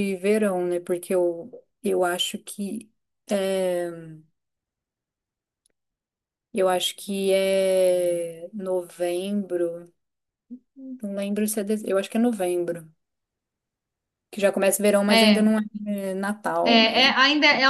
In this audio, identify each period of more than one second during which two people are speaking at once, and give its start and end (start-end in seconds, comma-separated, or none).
none